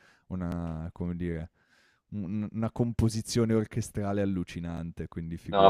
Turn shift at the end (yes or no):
yes